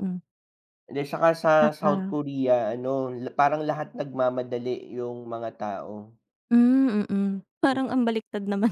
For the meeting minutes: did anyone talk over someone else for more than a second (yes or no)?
no